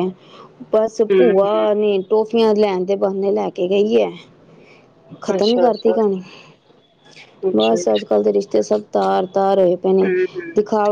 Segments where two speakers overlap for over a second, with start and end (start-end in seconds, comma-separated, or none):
none